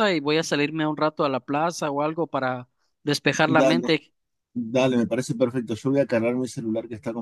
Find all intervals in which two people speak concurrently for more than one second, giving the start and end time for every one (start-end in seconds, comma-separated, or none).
none